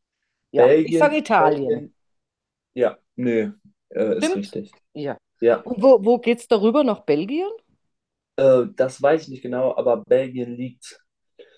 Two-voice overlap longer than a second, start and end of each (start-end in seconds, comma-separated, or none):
0.6-1.9